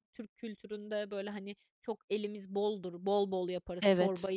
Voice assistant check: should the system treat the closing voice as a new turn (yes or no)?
no